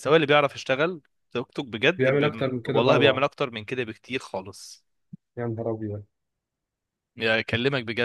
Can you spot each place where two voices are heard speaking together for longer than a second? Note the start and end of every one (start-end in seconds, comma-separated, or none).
2.0-3.2